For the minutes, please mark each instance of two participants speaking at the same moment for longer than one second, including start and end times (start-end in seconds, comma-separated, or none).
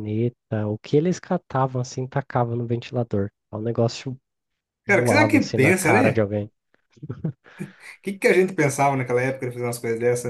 4.9-6.3